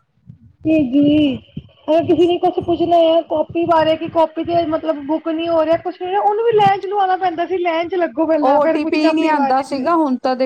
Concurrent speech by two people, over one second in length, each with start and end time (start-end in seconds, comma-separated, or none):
8.5-9.8